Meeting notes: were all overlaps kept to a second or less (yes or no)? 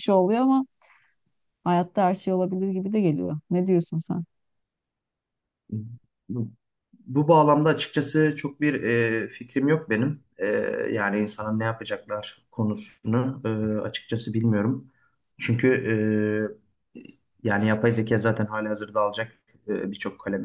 yes